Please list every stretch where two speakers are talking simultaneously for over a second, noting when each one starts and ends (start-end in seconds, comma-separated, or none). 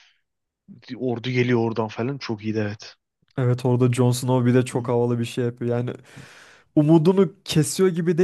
none